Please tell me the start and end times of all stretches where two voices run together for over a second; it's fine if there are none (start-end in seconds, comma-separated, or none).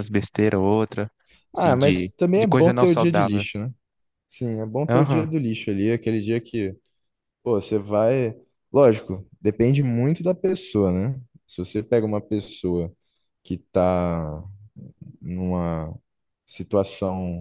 1.6-3.4